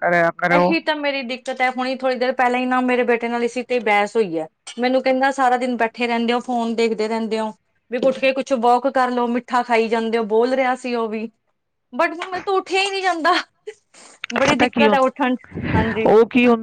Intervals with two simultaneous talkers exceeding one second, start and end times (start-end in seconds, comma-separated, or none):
none